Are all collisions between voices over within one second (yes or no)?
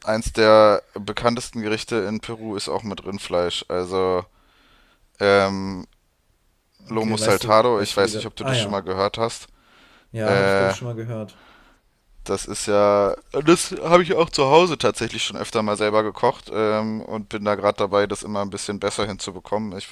no